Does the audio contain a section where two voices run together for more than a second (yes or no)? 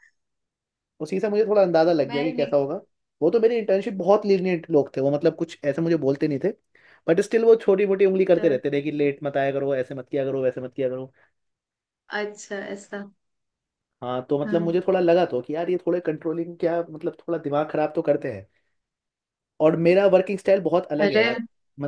no